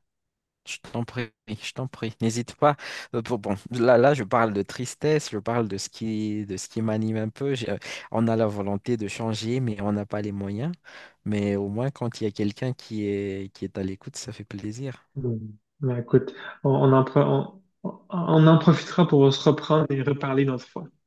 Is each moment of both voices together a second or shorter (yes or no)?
yes